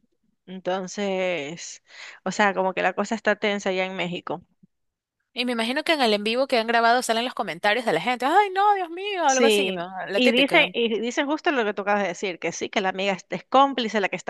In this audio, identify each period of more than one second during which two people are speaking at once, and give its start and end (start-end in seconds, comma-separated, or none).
9.2-10.7